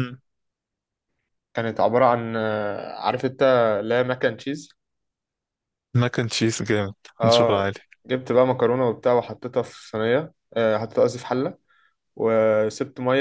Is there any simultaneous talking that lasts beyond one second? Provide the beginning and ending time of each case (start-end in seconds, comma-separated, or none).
none